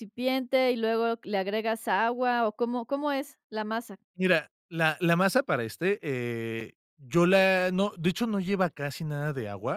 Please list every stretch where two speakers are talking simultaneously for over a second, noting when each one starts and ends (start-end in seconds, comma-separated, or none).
none